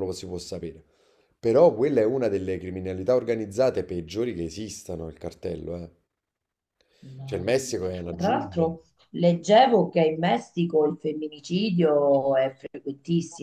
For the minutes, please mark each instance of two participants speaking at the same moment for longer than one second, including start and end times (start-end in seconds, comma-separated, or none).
7.2-8.7